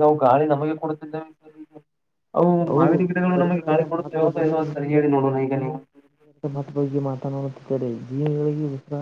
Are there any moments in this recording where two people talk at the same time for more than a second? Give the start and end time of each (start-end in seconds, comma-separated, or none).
2.7-4.7